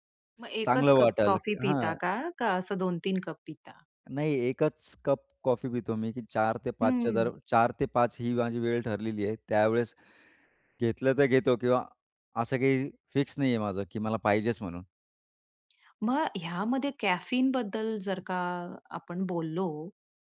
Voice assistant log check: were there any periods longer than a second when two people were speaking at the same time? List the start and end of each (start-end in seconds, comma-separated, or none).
0.6-2.1